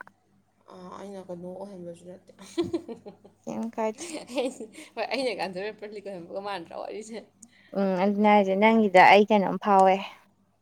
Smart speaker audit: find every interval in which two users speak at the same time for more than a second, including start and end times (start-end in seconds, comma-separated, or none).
none